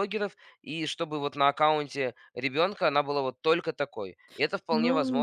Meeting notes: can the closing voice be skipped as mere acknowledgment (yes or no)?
no